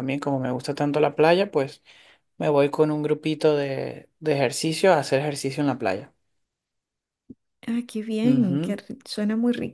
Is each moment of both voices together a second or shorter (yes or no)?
yes